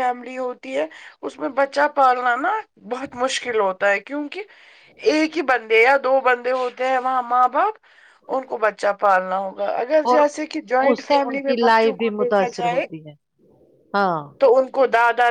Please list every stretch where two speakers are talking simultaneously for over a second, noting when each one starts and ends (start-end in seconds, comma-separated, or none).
10.9-12.8